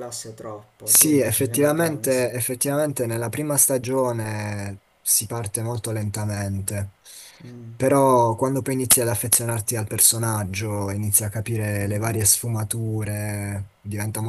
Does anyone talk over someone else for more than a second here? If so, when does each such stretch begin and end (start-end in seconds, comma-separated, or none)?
0.8-2.2